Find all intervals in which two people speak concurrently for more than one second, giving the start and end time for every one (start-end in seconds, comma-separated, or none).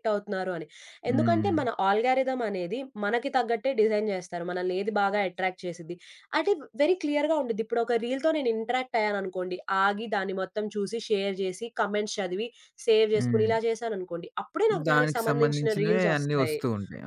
14.9-16.6